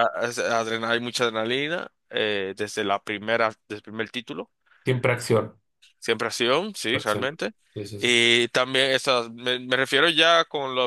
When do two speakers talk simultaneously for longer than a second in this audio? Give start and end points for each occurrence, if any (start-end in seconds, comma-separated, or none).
none